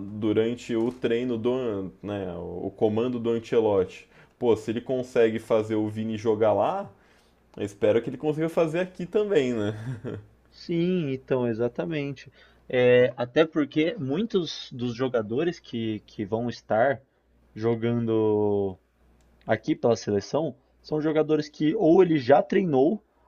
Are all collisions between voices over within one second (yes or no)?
yes